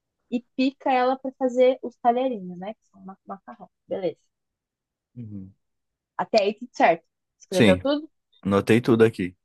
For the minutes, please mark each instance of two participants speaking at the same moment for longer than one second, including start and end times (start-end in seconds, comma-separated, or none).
none